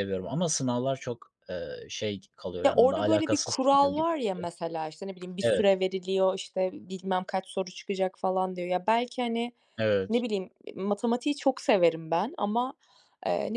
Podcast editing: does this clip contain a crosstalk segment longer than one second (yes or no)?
yes